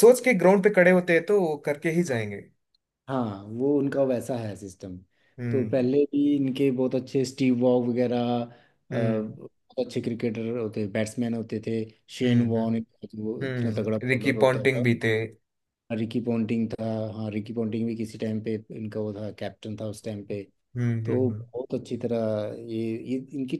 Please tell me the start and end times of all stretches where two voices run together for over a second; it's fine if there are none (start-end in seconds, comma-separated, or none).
13.4-14.8